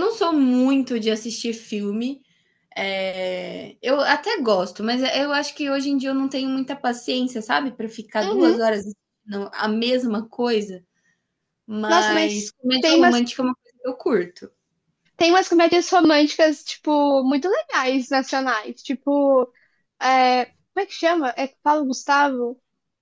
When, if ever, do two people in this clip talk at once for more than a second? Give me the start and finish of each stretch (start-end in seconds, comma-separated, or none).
11.9-13.2